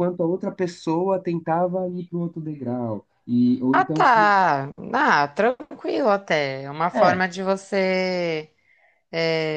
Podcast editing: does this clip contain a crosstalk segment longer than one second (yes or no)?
no